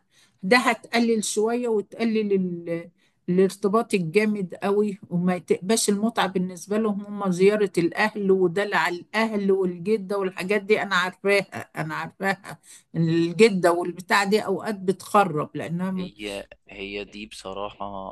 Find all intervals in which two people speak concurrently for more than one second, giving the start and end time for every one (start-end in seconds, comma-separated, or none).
none